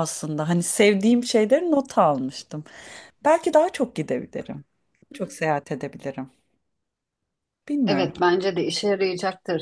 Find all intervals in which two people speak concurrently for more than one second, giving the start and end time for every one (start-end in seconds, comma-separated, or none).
none